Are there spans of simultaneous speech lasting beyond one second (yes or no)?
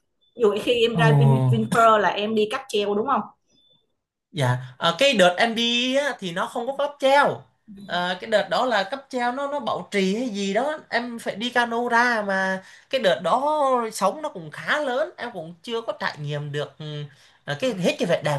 no